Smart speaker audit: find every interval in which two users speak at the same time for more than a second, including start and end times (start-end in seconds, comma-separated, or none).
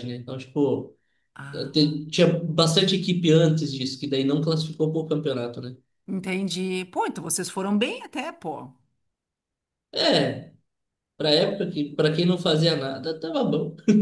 none